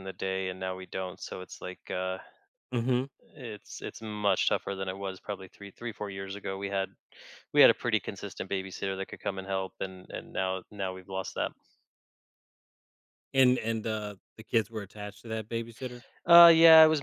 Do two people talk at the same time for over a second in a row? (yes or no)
no